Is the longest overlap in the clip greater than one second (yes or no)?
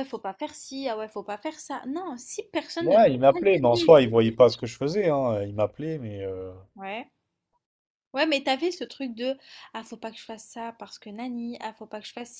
yes